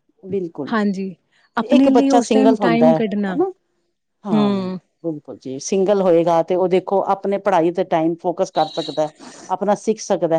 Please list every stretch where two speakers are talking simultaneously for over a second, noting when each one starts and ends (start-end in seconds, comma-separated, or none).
1.8-3.4